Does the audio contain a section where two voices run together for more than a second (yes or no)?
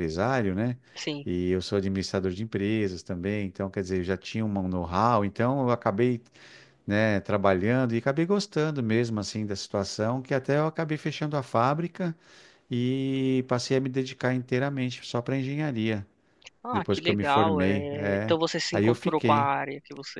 yes